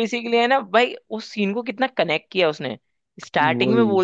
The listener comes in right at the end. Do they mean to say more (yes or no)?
no